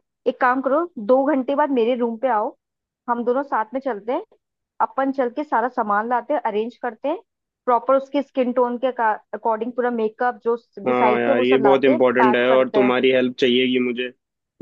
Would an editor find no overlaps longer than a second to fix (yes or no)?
no